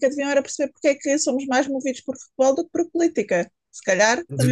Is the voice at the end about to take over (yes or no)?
yes